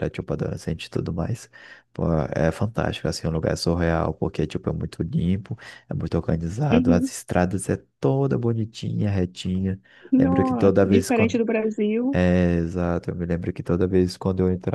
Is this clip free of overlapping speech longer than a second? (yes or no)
no